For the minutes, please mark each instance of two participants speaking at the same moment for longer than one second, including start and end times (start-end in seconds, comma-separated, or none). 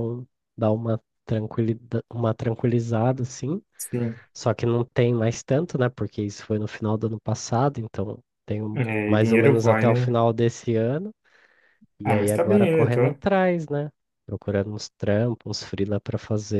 8.7-10.2, 12.0-13.2